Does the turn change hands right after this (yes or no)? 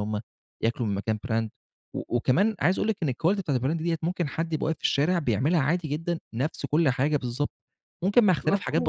yes